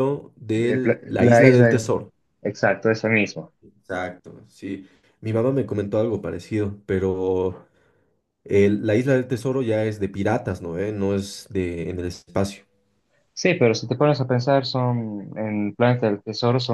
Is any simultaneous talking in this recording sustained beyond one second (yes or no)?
yes